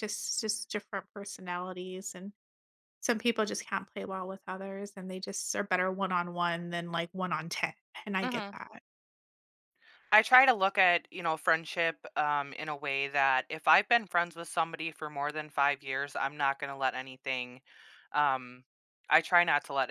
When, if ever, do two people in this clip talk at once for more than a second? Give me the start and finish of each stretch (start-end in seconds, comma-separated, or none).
none